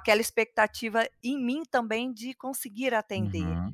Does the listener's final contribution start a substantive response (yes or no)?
yes